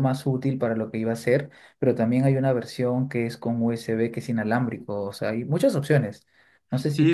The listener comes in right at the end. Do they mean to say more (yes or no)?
yes